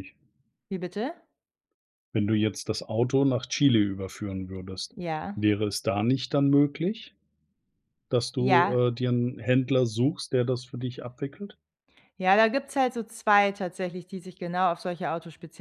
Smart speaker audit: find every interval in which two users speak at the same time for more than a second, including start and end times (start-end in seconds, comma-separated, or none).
none